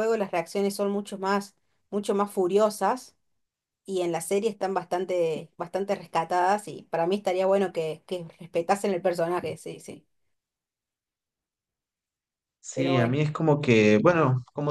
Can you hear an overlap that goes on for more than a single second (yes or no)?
no